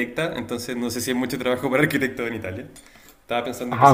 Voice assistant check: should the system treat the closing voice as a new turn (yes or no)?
yes